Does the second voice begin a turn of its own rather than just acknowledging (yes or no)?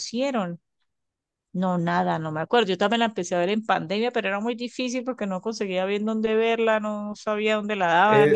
yes